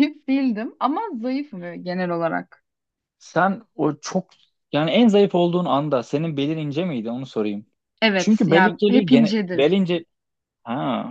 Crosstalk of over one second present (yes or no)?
yes